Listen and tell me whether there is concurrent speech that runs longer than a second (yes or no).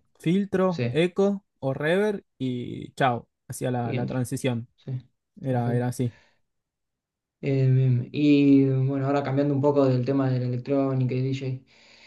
no